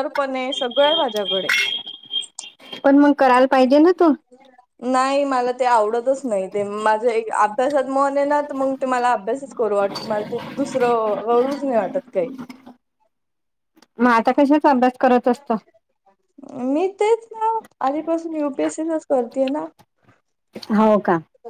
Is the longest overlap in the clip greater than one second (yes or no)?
no